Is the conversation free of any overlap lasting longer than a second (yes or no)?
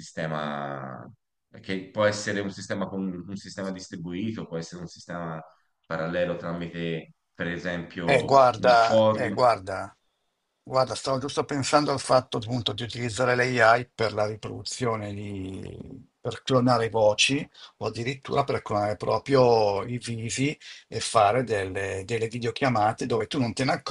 no